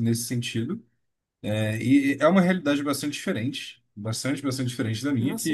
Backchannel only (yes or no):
yes